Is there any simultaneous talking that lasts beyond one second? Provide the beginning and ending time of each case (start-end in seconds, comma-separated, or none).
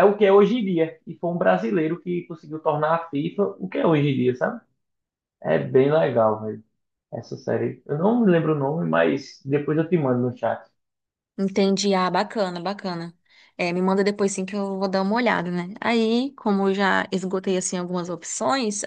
none